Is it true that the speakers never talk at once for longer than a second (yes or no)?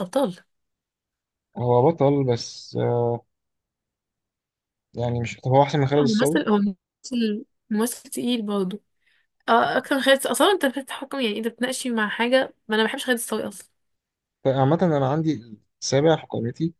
yes